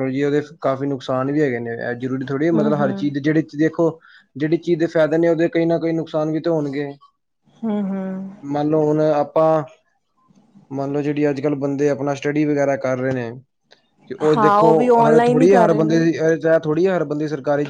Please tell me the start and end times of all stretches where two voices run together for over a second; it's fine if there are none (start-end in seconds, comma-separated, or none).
14.3-16.0